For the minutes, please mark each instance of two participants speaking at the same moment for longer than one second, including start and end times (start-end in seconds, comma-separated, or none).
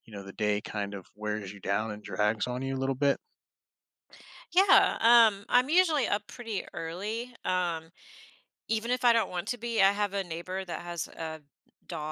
none